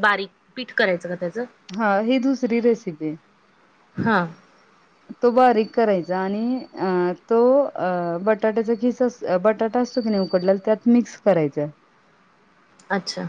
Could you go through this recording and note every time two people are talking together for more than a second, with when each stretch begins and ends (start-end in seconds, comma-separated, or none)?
none